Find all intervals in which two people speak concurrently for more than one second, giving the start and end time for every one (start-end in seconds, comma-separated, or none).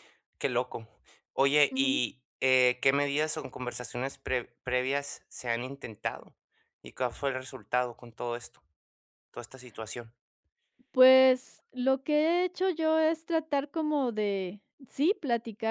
none